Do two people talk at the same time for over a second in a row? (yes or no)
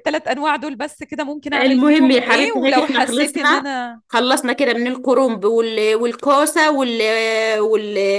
yes